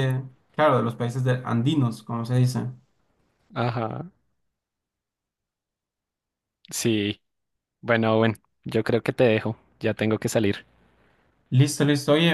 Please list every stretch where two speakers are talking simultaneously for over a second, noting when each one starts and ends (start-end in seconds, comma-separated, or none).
none